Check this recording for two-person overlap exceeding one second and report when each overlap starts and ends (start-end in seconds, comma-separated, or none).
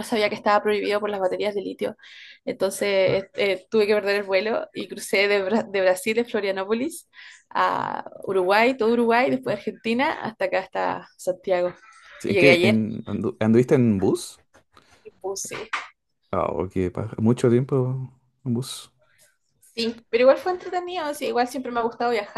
none